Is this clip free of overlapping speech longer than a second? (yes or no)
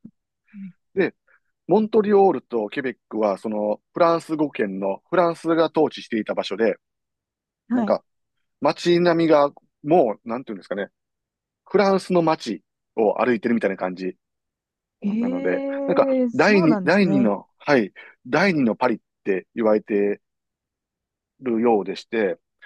no